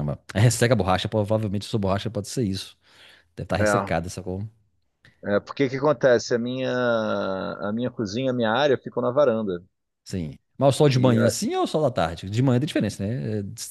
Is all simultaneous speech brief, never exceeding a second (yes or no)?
yes